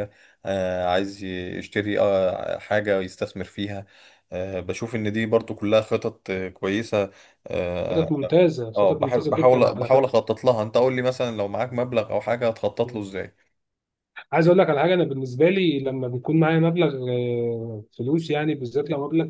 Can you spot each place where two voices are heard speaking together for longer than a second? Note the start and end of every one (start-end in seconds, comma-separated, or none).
8.8-10.1